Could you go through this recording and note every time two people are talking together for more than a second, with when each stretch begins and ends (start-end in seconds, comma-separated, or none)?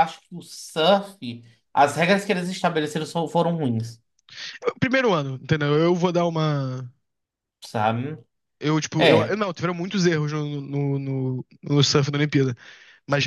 none